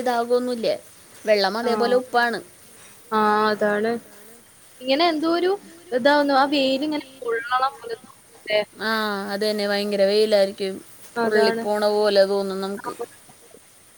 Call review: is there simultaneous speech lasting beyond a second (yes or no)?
no